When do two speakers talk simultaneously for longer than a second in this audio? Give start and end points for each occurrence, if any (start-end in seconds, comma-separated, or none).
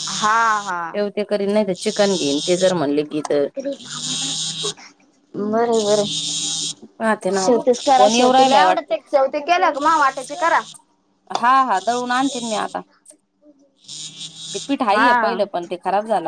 7.4-8.9